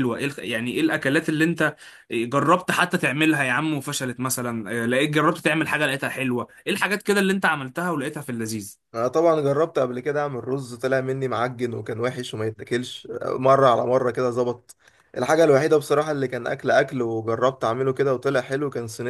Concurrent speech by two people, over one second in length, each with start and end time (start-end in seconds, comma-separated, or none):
none